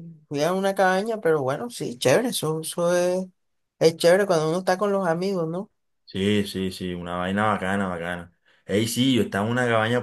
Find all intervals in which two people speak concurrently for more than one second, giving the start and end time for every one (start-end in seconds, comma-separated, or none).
none